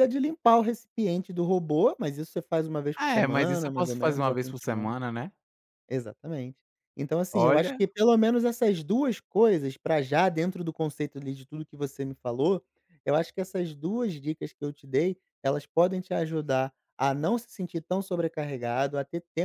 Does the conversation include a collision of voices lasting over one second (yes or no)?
yes